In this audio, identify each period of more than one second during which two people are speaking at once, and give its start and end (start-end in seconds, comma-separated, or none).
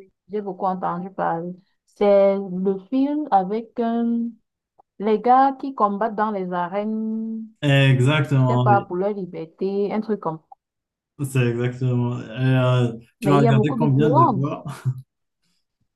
13.2-14.4